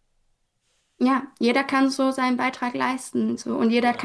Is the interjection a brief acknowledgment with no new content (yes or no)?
yes